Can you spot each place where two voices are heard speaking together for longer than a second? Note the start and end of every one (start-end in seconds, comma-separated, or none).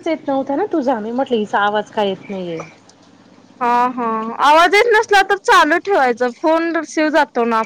none